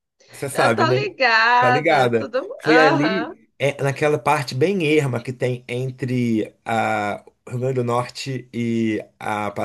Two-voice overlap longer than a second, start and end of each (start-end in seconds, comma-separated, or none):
1.6-3.3